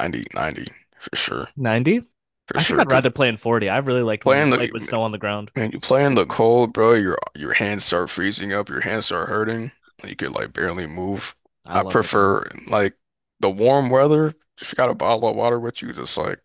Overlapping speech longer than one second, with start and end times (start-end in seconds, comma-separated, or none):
none